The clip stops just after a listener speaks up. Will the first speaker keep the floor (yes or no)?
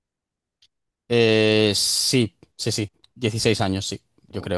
no